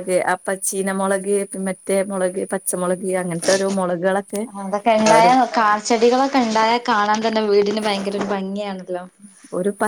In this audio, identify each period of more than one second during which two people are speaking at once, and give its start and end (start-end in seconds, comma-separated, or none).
none